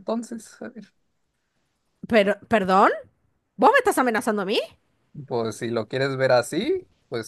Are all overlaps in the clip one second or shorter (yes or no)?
yes